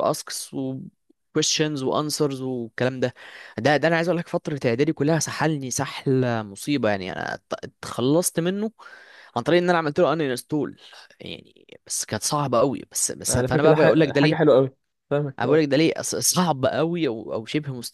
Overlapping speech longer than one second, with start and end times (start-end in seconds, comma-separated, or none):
13.3-14.5